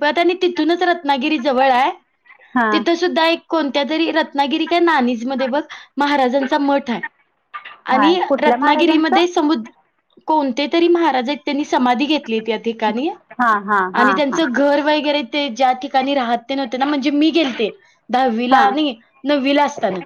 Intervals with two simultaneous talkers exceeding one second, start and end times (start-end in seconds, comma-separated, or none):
7.9-9.3